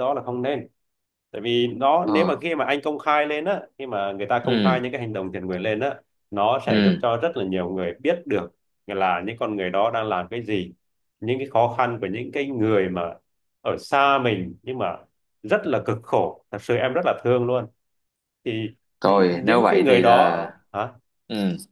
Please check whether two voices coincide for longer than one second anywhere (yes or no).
yes